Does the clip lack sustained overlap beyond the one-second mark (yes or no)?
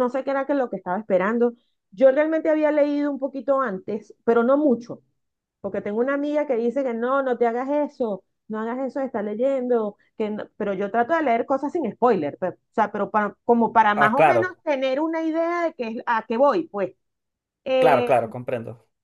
yes